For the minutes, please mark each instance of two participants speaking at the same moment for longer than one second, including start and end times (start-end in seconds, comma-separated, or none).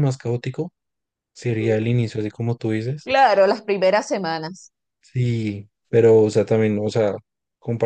none